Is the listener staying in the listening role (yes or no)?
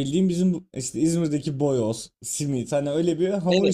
no